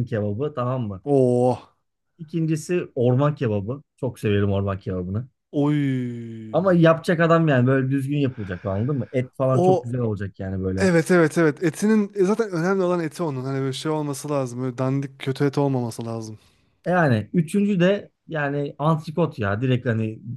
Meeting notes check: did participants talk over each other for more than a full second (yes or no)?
no